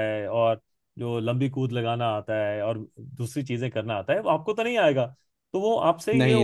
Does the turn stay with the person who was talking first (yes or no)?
yes